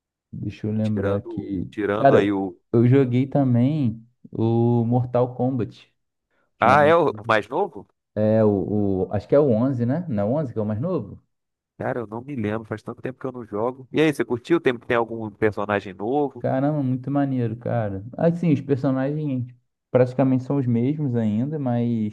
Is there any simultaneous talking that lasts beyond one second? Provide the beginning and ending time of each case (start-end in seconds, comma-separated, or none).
0.8-2.6